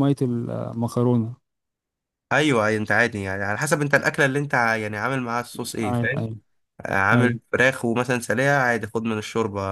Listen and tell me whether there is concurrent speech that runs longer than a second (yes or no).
no